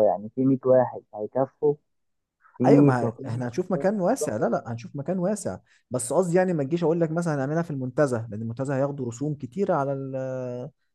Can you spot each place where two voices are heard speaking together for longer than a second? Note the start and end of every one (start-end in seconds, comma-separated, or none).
none